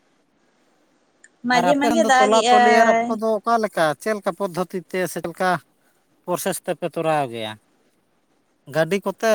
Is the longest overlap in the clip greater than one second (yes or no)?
yes